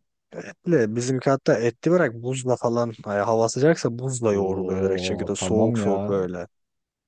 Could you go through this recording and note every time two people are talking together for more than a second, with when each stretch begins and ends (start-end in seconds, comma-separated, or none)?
4.4-5.9